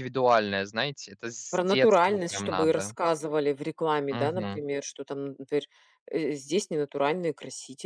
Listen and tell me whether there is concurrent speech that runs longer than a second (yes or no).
yes